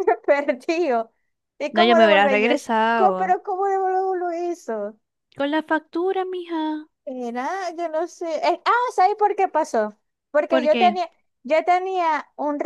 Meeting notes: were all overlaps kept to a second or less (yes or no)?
no